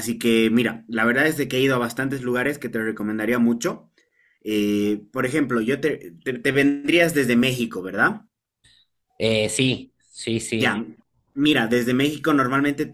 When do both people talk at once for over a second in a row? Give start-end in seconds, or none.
none